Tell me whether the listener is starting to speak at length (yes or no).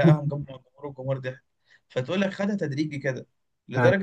no